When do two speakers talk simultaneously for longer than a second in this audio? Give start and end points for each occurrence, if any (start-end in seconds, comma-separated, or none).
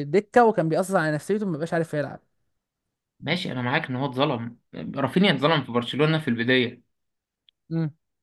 none